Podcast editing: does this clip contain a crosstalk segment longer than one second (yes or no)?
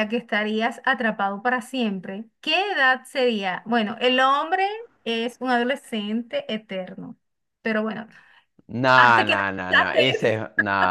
yes